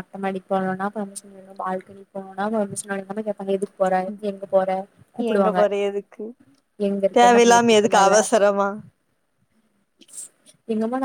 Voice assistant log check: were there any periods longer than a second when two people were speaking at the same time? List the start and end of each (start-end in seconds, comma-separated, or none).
7.2-8.6